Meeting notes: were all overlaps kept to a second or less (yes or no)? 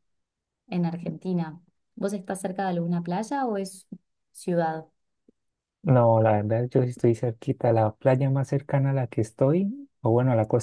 yes